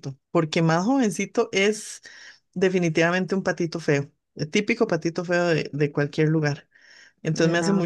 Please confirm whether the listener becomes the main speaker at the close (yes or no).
no